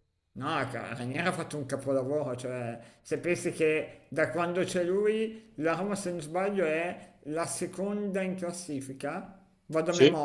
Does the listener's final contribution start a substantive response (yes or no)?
no